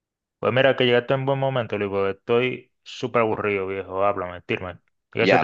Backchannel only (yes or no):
no